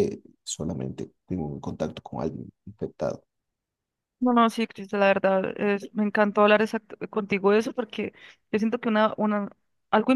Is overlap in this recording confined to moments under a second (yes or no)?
yes